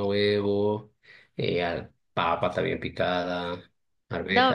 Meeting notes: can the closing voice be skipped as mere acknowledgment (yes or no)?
no